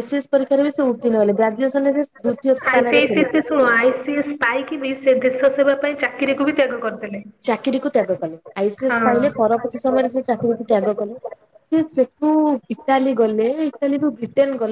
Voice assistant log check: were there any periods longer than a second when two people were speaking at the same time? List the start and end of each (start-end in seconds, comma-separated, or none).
none